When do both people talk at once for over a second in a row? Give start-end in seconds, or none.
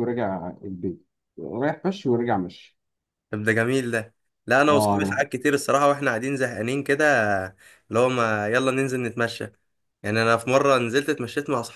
none